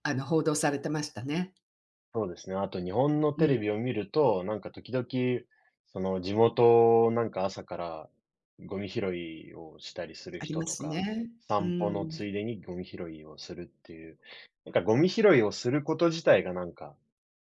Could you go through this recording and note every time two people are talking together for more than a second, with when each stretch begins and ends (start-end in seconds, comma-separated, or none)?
10.4-12.2